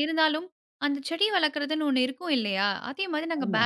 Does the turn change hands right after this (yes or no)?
no